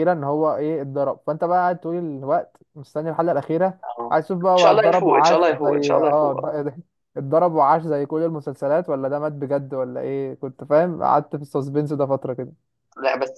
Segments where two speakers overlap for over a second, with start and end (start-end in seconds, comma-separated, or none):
3.8-6.5